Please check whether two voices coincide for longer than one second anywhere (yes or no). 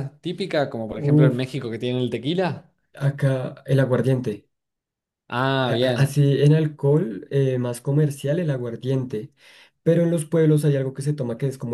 no